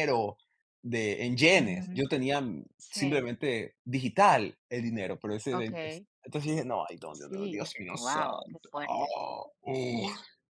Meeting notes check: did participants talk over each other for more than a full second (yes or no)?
yes